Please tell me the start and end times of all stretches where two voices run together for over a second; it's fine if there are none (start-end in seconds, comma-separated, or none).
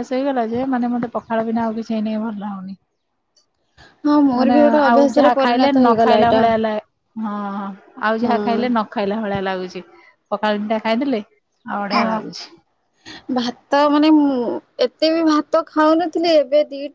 4.4-6.4